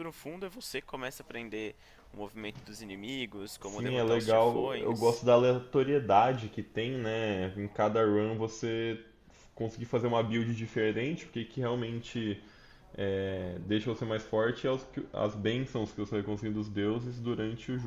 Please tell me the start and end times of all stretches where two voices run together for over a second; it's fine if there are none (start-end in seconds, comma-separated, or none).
3.6-5.2